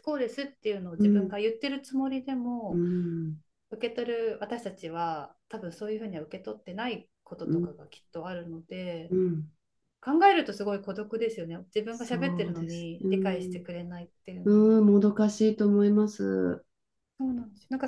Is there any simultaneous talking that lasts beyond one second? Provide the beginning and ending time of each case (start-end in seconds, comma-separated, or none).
11.9-13.7